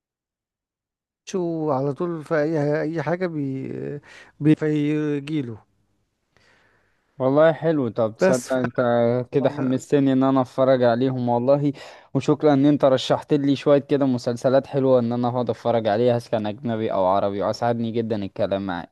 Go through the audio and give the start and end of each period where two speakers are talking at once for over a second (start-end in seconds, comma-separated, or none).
none